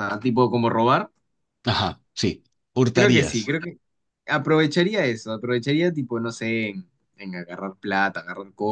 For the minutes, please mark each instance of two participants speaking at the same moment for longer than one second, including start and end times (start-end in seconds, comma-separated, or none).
none